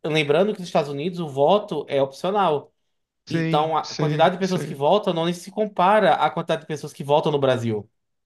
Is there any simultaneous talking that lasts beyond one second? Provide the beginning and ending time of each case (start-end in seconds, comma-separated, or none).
3.3-4.8